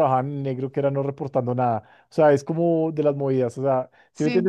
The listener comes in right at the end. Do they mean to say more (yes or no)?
no